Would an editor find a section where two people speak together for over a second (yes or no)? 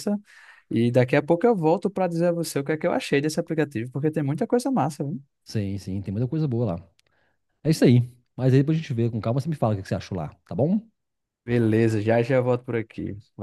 no